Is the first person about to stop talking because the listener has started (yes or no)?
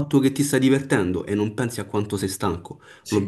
no